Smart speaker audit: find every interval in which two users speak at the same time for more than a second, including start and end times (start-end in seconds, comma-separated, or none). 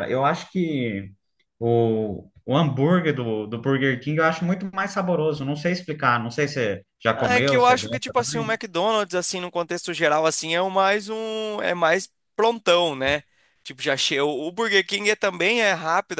7.1-8.6